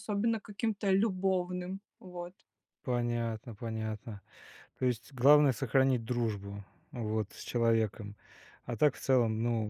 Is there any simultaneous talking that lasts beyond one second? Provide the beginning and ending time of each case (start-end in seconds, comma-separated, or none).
none